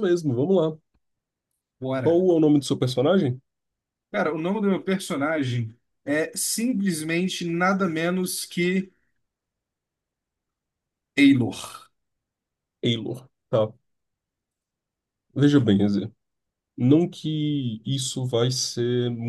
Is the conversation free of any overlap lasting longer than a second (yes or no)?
yes